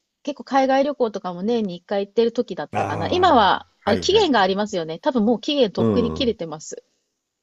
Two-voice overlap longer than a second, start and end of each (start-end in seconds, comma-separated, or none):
2.7-4.3